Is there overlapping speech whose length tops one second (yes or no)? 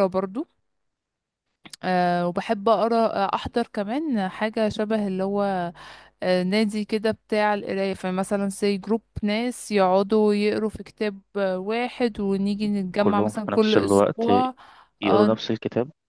yes